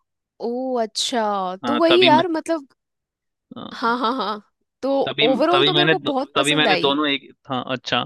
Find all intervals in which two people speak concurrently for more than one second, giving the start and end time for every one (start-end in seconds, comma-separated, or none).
5.1-7.0